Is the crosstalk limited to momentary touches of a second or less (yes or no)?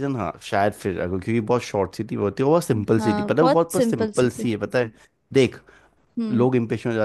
no